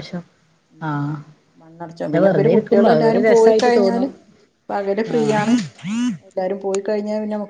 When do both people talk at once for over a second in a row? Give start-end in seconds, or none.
2.1-4.1